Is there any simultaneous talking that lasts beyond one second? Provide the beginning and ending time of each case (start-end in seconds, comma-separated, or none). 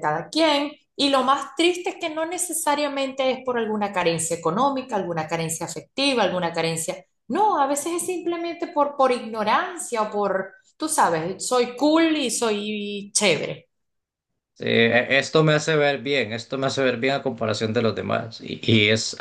none